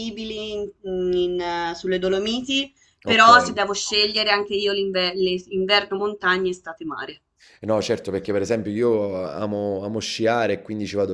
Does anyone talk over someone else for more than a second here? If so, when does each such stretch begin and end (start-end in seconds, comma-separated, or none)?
none